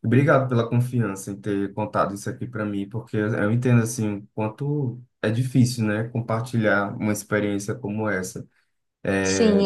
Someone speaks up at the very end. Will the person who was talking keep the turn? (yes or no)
no